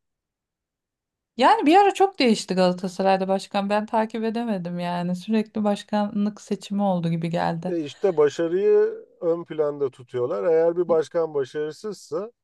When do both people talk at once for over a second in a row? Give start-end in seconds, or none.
none